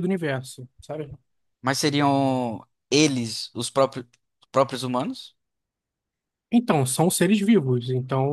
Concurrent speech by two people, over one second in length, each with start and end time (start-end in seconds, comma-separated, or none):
none